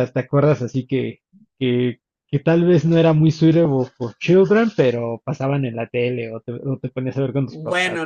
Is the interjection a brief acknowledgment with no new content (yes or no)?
no